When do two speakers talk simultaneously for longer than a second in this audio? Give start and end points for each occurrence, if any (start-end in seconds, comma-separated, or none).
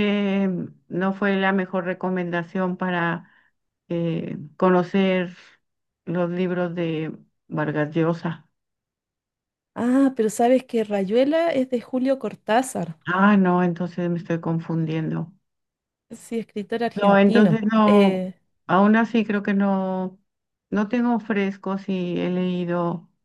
16.9-18.3